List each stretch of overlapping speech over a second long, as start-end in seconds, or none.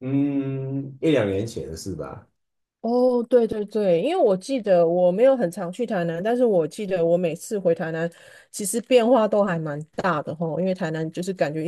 none